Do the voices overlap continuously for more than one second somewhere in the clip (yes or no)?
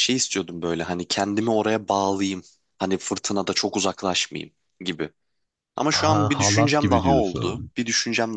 yes